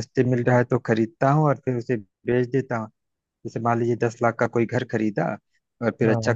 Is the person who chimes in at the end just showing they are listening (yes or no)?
yes